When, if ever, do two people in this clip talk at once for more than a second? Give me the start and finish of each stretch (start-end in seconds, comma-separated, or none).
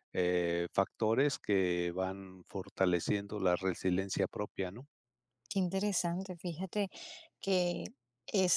none